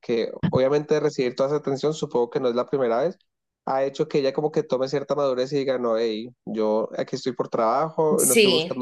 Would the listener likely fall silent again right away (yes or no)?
yes